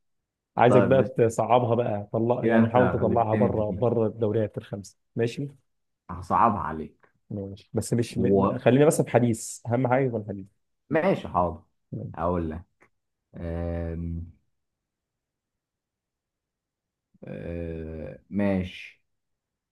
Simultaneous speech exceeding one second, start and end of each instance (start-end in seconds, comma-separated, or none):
2.4-3.8